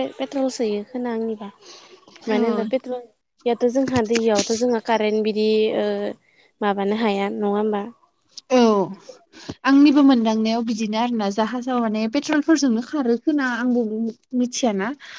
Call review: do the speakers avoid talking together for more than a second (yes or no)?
yes